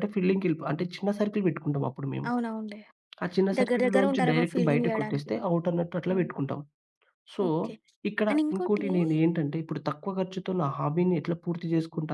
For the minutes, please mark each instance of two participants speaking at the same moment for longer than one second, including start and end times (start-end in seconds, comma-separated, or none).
3.6-5.3